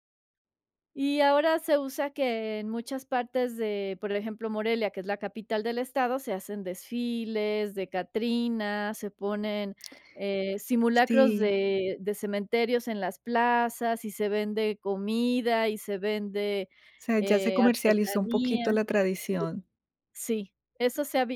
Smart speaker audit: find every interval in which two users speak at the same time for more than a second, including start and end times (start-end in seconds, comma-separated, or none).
17.1-18.7